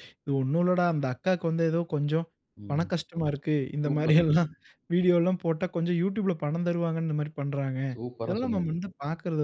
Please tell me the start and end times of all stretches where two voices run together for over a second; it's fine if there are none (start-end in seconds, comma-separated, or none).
none